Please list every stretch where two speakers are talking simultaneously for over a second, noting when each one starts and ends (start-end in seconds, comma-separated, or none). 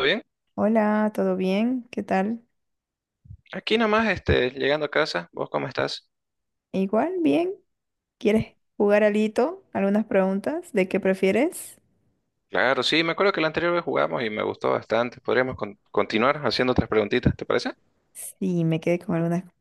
none